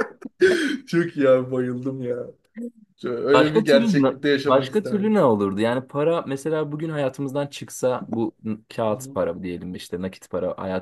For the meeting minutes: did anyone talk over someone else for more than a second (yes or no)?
yes